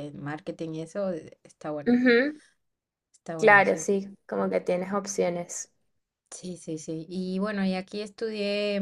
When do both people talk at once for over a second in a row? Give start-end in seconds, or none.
none